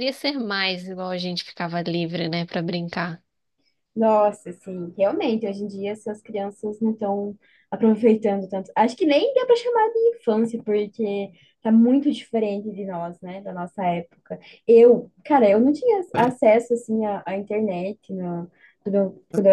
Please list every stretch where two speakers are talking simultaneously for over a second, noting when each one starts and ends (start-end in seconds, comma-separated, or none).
none